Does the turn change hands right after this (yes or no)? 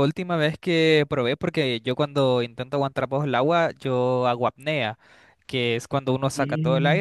no